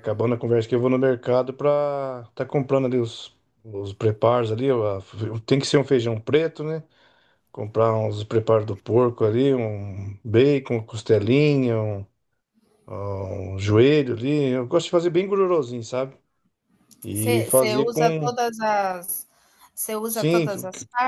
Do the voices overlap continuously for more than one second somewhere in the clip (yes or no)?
yes